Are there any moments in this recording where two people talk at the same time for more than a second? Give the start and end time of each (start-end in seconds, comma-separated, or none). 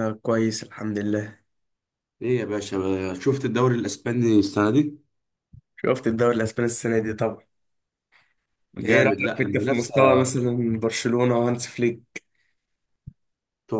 8.8-10.3